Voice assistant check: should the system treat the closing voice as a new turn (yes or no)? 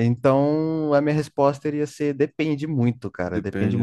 no